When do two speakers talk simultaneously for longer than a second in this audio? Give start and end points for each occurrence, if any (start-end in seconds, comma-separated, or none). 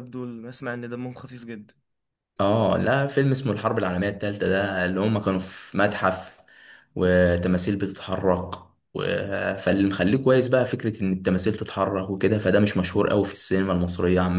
none